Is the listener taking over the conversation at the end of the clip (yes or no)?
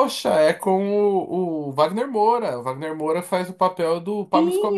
yes